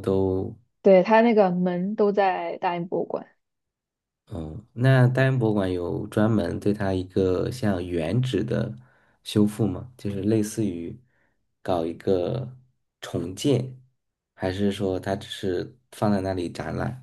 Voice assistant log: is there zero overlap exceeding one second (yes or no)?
yes